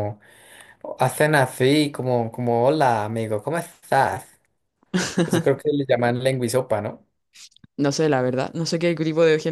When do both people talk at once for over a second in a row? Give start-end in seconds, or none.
none